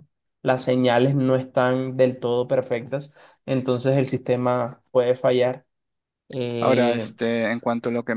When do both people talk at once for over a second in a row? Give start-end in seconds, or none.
none